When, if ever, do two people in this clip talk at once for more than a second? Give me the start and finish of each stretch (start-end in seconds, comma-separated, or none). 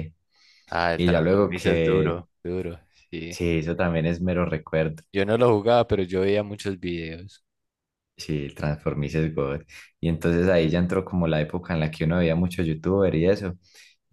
1.0-2.2